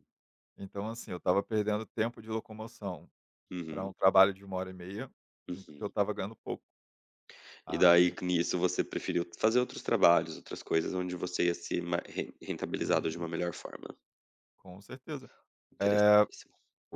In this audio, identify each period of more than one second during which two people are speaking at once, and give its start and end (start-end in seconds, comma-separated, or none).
none